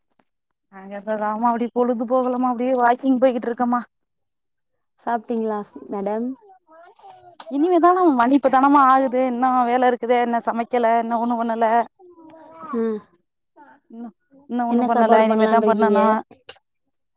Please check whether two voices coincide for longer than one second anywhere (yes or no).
yes